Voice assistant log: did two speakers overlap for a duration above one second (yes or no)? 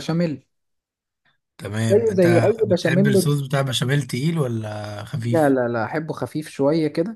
yes